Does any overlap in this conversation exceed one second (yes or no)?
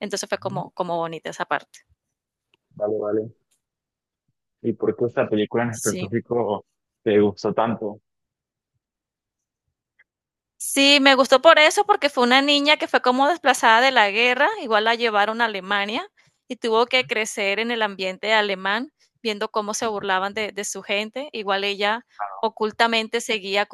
no